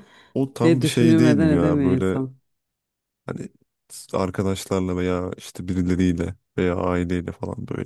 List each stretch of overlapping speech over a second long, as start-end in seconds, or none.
0.6-2.2